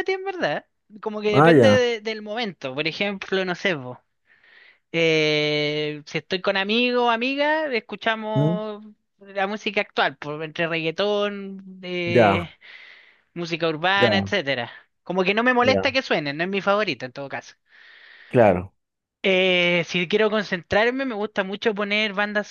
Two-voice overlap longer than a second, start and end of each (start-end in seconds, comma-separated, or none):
none